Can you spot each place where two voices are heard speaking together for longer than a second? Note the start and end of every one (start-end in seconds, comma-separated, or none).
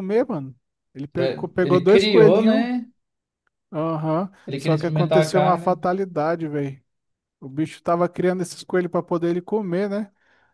1.1-2.7, 4.4-5.8